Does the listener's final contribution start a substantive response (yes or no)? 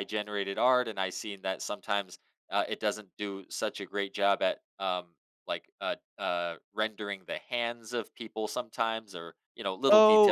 yes